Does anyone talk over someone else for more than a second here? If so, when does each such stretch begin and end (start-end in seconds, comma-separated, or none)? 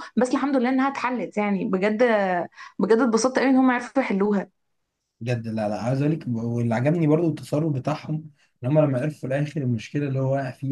none